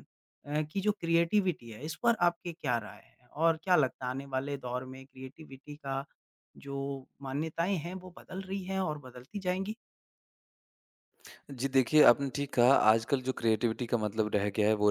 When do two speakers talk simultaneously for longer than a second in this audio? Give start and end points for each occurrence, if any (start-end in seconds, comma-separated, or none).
none